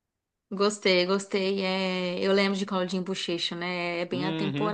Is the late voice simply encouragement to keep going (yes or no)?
no